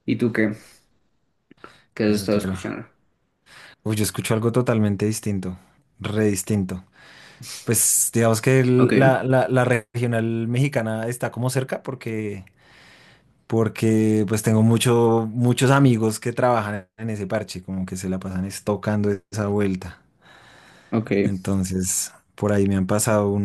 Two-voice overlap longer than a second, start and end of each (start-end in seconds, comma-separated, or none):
none